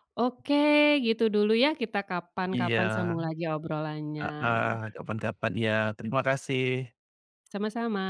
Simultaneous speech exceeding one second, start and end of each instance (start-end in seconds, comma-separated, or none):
none